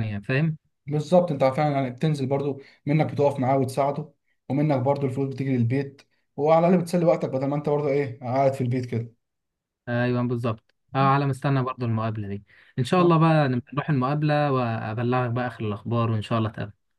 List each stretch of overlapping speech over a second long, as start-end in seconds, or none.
none